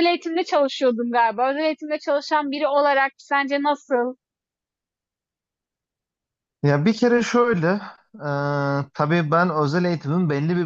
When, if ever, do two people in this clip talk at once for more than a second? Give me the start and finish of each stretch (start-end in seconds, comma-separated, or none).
none